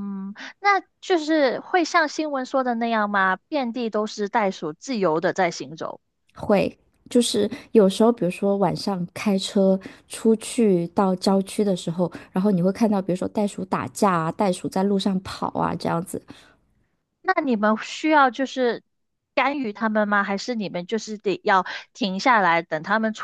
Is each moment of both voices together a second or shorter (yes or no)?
yes